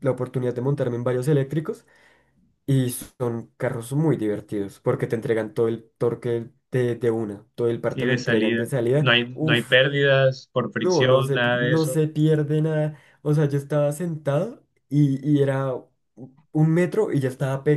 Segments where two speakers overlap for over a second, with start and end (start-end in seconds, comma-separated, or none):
7.9-9.8, 10.8-12.0